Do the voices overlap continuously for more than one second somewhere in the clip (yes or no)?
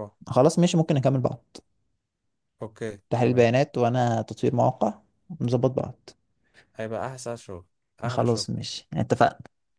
no